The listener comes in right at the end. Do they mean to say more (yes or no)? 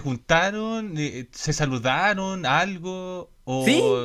yes